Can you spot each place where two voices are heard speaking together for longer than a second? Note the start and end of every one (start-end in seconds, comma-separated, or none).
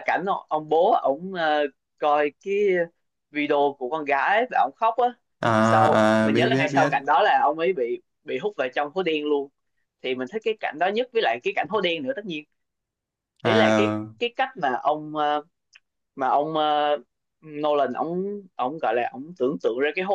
5.6-6.9